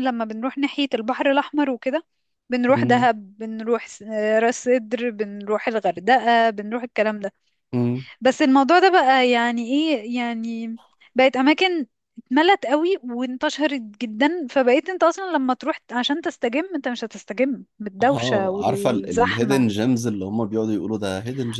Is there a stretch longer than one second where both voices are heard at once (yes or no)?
yes